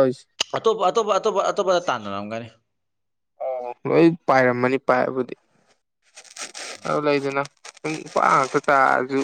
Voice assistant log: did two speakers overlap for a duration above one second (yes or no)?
no